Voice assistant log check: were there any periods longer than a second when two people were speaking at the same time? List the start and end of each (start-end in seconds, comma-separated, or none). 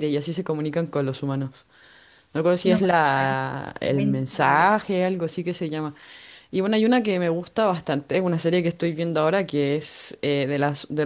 2.6-4.8